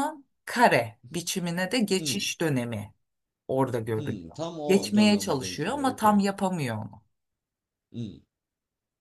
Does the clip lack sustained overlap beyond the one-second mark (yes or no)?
no